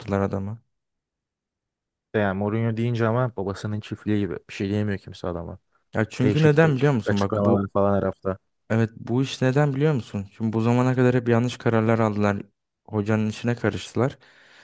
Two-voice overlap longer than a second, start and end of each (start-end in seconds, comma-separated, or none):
6.2-7.7